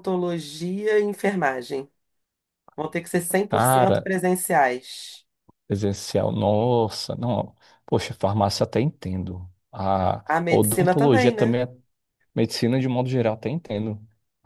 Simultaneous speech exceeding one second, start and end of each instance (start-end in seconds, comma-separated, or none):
10.3-11.6